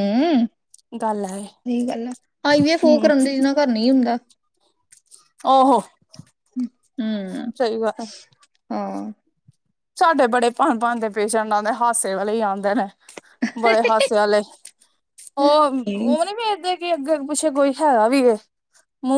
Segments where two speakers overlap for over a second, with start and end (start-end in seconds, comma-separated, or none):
none